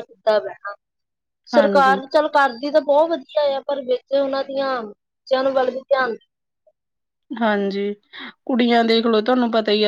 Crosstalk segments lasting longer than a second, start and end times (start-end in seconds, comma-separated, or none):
none